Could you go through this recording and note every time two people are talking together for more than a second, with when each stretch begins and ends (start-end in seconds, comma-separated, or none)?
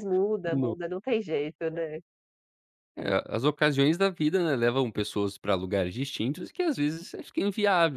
none